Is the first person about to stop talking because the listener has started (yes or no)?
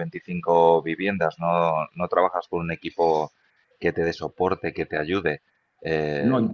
no